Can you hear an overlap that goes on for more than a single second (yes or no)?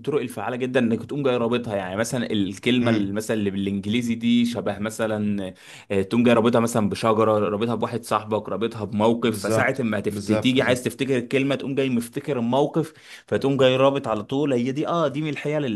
yes